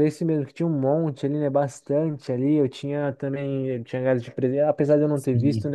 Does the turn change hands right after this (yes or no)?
no